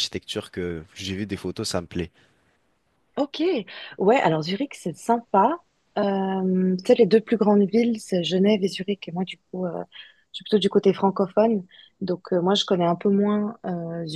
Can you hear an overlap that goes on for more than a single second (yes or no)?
no